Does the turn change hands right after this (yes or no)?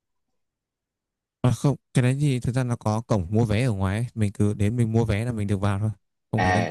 yes